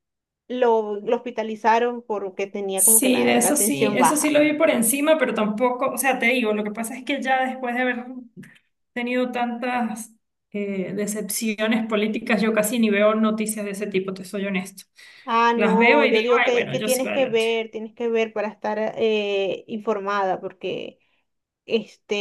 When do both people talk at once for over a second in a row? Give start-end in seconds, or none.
2.7-4.4, 15.5-17.4